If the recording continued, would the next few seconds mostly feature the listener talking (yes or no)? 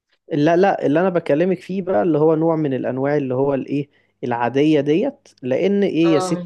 no